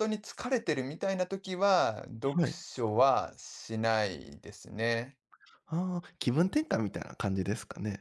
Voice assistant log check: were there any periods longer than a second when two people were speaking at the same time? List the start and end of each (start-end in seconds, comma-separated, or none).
none